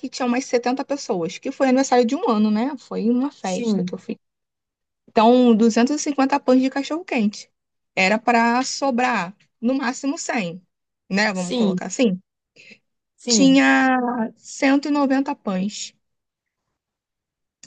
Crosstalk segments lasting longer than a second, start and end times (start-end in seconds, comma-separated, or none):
none